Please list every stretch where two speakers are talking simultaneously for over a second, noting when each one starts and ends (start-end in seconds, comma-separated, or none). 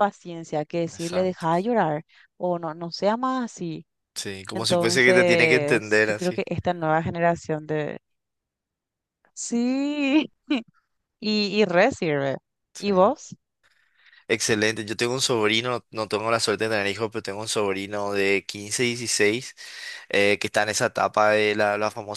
4.5-6.5